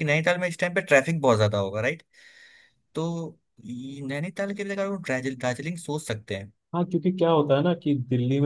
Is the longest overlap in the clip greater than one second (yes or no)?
no